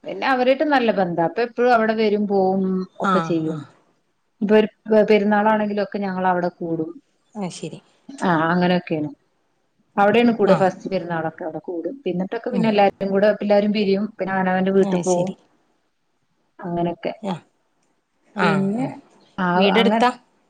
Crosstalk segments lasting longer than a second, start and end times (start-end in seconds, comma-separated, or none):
none